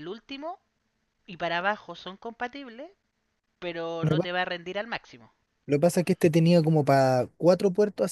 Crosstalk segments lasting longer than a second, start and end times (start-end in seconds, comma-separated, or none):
none